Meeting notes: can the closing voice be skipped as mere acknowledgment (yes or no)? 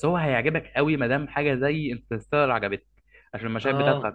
yes